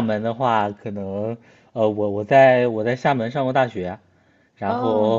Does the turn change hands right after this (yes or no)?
no